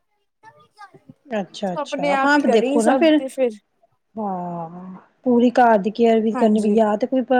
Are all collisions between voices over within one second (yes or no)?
no